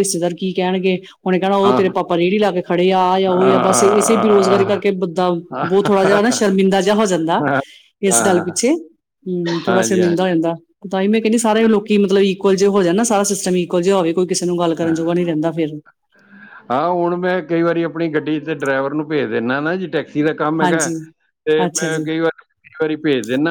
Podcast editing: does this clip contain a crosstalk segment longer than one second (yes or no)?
yes